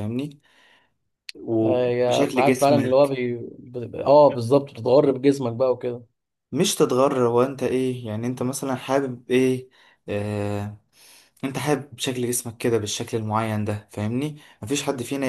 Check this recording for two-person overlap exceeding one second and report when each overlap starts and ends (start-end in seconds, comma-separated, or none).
1.6-3.1